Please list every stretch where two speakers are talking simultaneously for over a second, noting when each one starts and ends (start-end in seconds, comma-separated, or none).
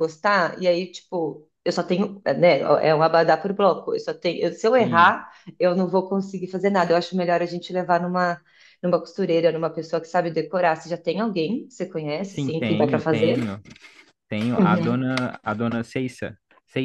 12.2-13.6